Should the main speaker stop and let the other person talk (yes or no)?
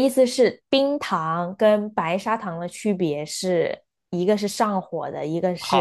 yes